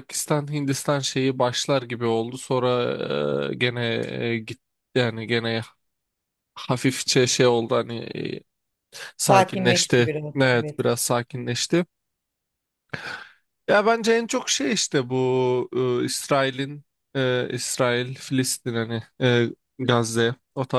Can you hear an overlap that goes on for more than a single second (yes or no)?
yes